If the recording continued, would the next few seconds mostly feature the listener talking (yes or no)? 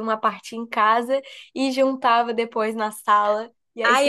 yes